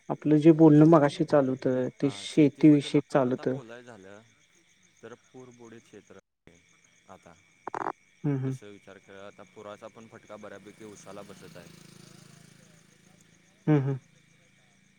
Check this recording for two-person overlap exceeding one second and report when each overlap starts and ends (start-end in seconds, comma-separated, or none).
2.0-3.6